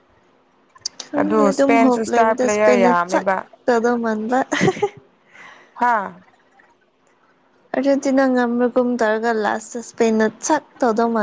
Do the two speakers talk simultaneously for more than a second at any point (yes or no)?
yes